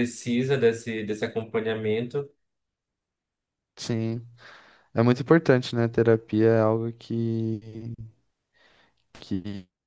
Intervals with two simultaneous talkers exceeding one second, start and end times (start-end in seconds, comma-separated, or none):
none